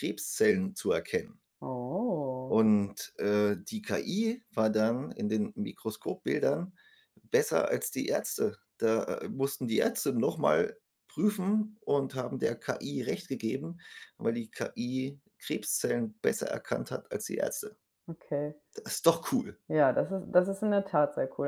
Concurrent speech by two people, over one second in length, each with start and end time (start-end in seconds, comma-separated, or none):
none